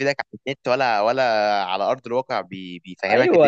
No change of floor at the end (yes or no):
no